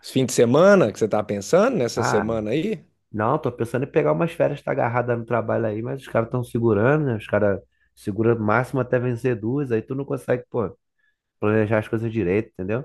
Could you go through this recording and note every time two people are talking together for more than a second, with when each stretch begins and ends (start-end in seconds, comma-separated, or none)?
none